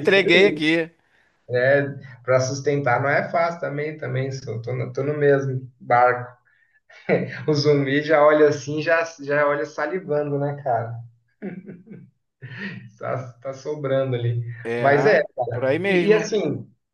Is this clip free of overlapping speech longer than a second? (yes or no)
yes